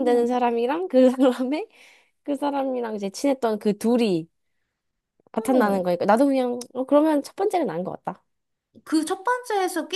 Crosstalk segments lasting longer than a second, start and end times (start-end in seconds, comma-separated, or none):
none